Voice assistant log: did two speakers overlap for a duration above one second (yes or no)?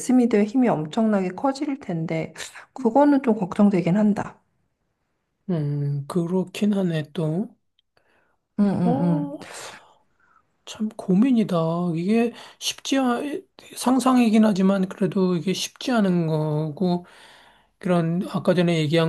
no